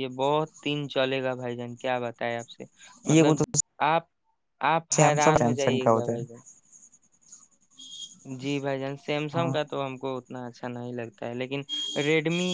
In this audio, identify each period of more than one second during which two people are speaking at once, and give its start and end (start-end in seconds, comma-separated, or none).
4.9-6.3